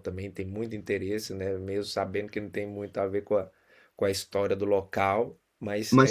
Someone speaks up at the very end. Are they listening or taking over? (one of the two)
taking over